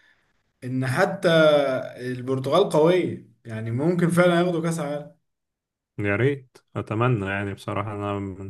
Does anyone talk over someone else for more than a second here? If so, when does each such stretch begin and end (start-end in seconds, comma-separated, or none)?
none